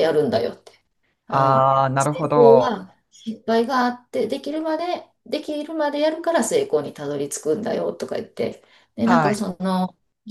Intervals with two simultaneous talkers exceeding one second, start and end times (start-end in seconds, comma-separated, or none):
1.3-2.7